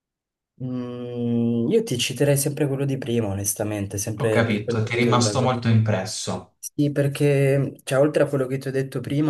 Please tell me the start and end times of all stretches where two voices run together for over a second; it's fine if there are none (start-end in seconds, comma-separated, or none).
4.2-5.5